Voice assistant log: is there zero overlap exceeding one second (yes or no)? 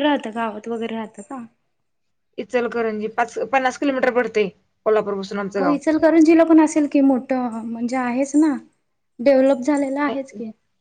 yes